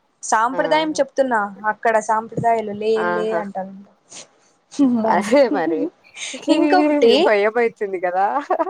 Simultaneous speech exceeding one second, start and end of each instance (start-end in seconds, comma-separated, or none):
none